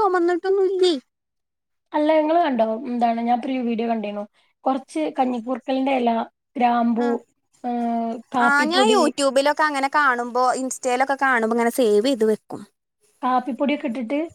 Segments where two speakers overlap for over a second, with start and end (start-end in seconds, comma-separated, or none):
none